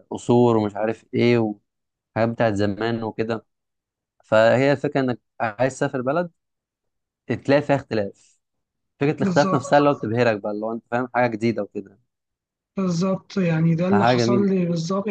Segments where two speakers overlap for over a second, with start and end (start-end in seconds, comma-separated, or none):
none